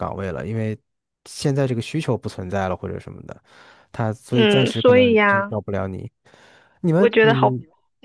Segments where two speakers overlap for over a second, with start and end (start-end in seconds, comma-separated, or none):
4.3-5.5